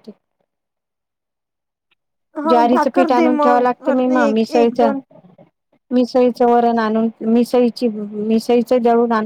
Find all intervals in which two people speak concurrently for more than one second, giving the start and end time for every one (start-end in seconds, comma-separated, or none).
2.5-4.8